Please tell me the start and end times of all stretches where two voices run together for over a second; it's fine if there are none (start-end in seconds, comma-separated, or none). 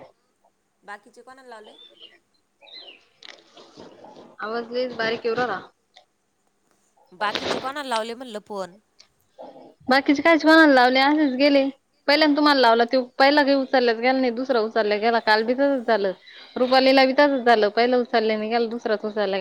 none